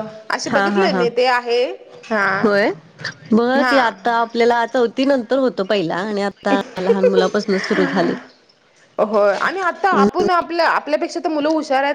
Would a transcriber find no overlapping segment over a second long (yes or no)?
yes